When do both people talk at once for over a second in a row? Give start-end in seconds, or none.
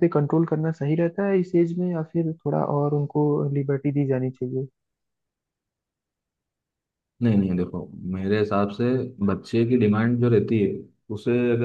none